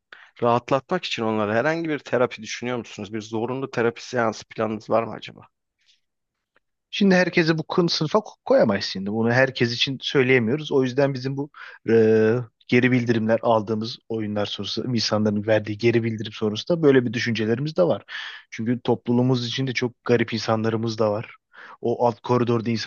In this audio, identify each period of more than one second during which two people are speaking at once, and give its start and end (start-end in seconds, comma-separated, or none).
none